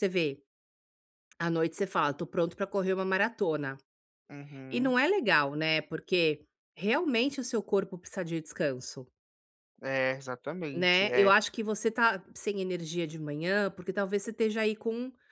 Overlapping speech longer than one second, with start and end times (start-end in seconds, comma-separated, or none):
none